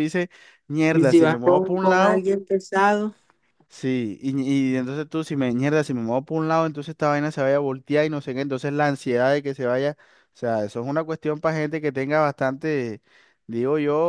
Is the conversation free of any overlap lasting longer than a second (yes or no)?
no